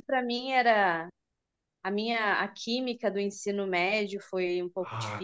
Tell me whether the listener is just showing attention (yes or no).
no